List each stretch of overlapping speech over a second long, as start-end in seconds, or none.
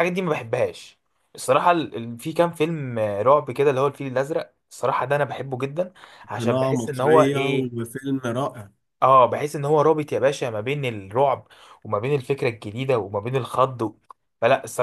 6.4-7.8